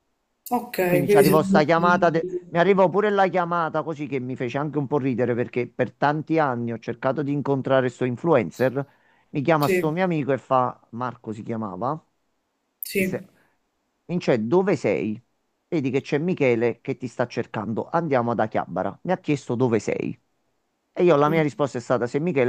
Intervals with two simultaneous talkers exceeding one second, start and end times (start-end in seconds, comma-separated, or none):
0.9-2.4